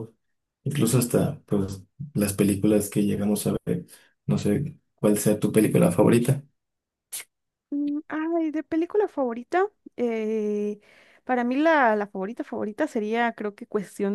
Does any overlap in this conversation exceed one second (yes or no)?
no